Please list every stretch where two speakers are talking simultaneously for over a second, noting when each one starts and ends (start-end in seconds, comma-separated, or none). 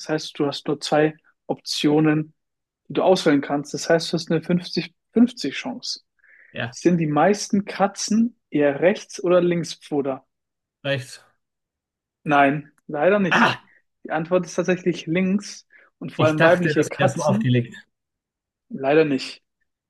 16.2-17.5